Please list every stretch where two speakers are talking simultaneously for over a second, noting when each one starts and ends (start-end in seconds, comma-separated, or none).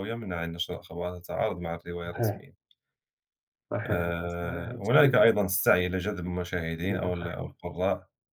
3.9-5.2